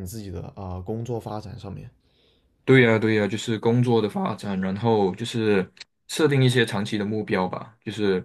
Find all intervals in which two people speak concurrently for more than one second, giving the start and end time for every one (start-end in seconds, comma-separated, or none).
none